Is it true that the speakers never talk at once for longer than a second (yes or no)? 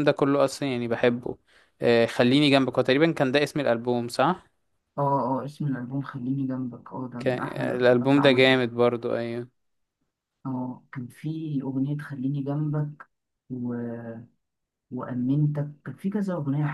no